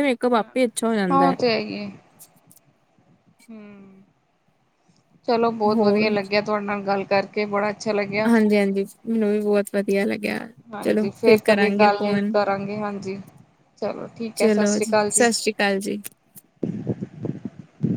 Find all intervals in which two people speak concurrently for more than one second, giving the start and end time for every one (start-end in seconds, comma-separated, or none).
none